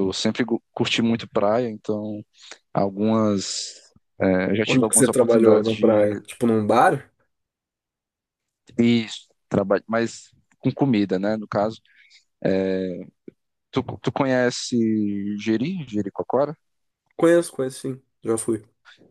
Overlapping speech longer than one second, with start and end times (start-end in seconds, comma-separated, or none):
4.7-6.1